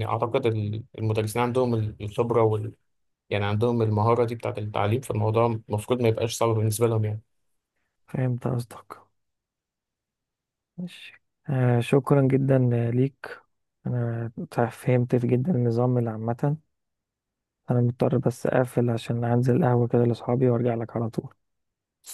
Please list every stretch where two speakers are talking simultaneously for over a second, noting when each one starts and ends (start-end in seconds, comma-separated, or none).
none